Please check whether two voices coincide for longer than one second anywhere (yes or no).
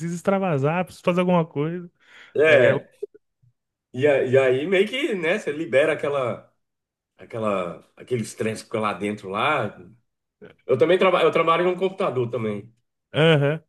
no